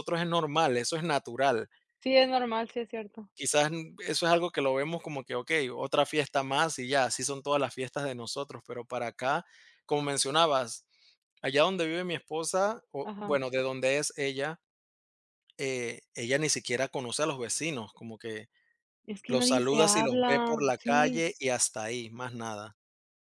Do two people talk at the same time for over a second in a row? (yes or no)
yes